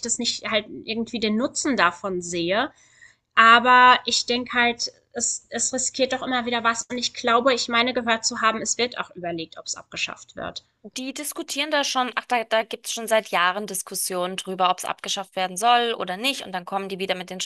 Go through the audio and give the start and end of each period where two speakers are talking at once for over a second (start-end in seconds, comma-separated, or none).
none